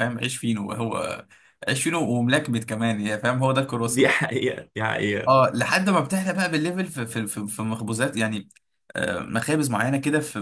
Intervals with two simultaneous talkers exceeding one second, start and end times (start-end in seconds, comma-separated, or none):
none